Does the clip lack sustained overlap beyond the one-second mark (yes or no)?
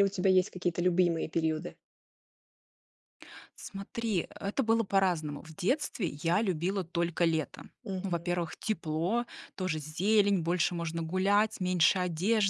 yes